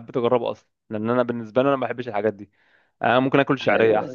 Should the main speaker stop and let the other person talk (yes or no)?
no